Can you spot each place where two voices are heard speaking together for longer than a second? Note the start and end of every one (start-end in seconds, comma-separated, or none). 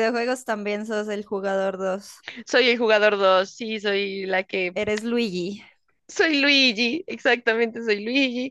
none